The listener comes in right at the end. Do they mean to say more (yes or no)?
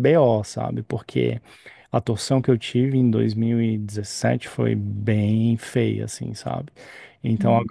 no